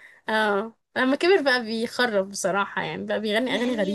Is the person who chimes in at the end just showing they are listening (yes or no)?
no